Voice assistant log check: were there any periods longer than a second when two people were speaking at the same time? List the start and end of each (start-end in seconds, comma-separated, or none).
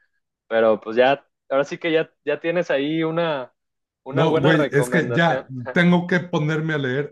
4.1-5.5